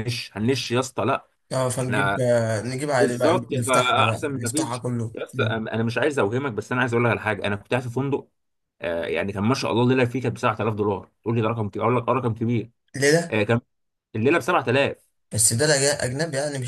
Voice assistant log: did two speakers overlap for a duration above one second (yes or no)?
yes